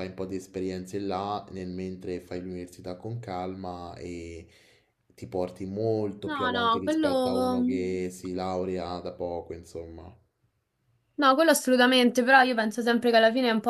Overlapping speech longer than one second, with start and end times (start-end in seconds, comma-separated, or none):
6.2-7.9